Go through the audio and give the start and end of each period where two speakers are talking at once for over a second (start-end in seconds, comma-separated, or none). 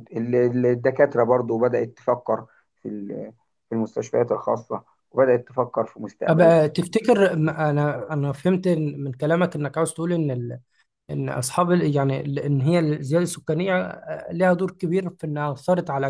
none